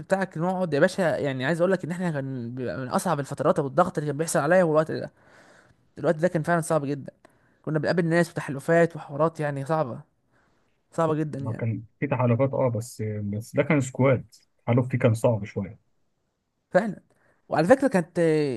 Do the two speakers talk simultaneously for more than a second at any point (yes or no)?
no